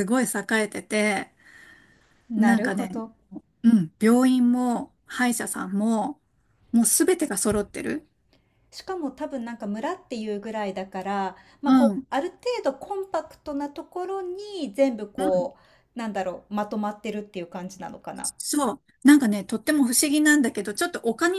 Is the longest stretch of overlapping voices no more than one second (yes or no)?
yes